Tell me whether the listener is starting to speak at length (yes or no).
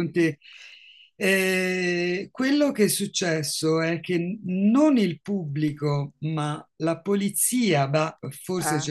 no